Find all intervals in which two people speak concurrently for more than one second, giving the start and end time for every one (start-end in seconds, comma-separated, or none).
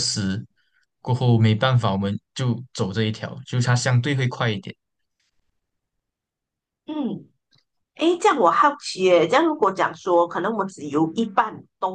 none